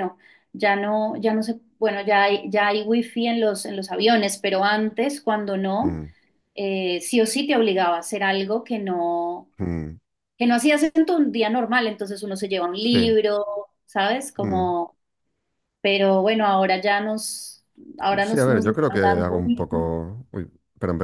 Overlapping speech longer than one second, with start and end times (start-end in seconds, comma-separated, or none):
18.2-19.9